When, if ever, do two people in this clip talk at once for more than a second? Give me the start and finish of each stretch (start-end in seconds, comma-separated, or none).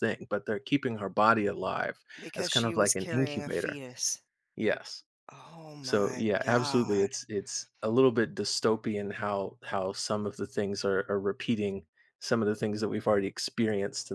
2.2-3.8, 5.8-7.1